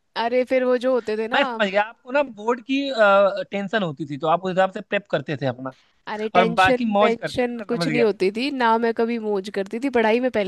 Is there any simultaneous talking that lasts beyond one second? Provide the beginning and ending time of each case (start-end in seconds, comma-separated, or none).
6.3-8.1